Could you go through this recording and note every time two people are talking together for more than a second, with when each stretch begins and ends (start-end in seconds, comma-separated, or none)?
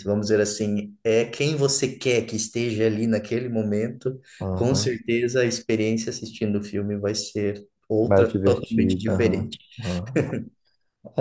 8.0-9.6